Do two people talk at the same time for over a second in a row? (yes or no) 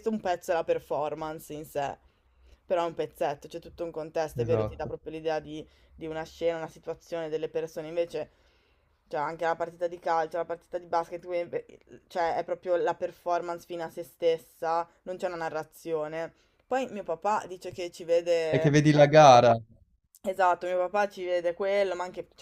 no